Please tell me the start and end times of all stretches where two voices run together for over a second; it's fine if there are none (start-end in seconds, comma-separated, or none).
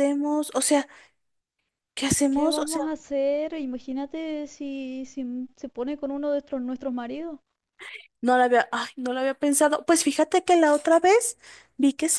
none